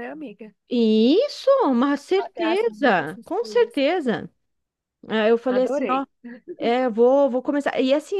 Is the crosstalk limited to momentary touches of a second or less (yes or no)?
no